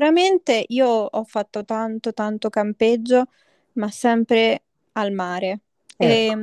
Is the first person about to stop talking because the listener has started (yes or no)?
no